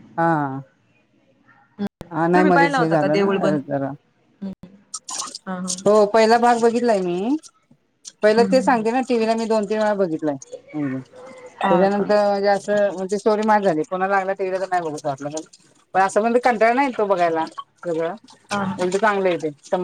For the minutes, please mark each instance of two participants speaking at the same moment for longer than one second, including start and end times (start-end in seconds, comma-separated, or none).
2.3-3.6